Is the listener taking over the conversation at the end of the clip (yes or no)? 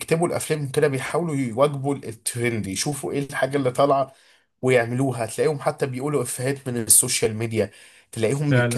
no